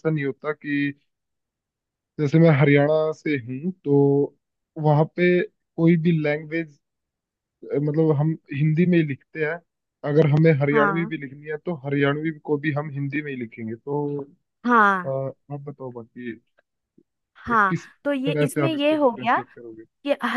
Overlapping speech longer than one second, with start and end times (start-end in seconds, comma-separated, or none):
17.5-19.4